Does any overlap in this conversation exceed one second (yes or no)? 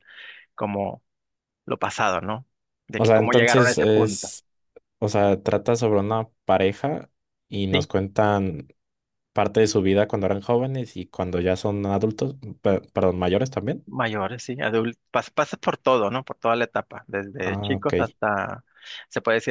yes